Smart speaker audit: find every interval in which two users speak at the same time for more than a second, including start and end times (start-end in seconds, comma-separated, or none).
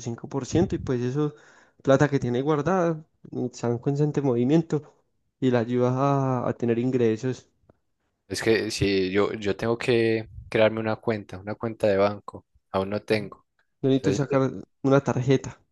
none